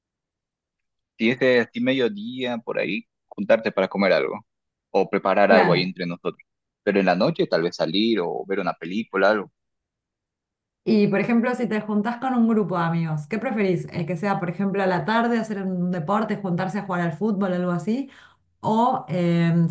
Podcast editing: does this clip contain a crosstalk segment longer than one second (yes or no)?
no